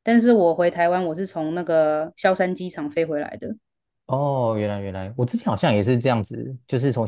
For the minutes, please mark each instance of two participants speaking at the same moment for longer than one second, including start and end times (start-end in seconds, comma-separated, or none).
none